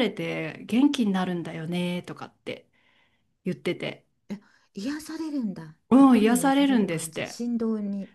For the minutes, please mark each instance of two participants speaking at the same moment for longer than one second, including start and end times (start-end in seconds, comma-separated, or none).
5.9-7.4